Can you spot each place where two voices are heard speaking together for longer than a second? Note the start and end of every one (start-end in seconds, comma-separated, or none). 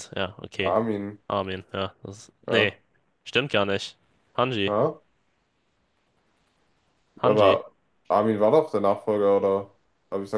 none